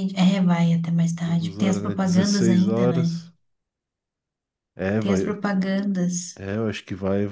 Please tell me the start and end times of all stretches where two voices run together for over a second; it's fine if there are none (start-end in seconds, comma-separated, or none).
1.2-3.2